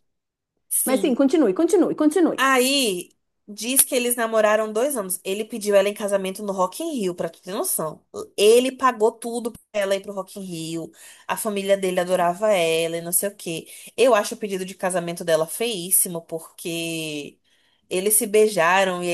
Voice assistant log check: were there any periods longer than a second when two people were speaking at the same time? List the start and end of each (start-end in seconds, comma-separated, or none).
none